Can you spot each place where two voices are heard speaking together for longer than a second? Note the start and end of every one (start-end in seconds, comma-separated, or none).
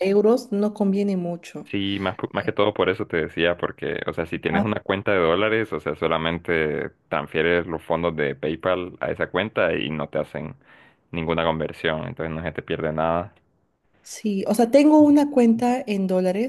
none